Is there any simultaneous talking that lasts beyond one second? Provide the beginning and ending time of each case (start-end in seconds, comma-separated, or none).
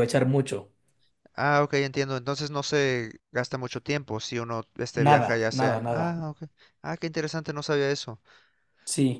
4.9-6.2